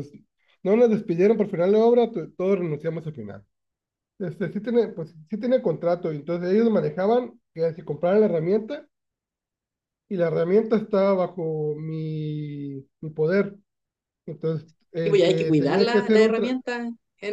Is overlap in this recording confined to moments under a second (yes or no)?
no